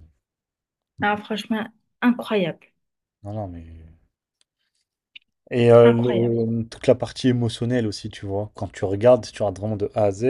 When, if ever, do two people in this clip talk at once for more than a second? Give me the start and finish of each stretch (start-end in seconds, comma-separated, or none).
none